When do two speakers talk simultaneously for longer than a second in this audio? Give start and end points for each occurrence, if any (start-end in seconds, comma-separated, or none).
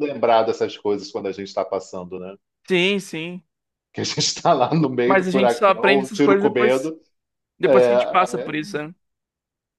5.1-6.9